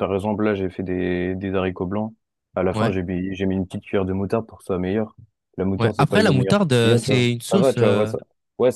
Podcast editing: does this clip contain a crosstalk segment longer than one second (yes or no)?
yes